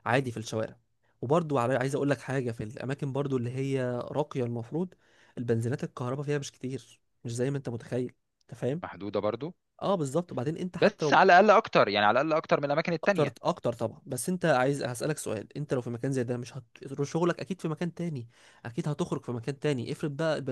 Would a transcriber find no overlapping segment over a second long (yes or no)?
yes